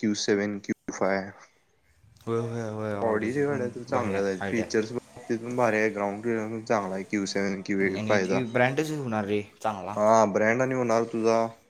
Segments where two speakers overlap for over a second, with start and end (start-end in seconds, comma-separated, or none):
3.1-4.7